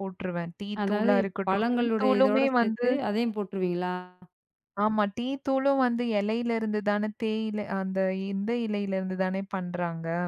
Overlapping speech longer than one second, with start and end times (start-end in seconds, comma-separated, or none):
0.8-2.9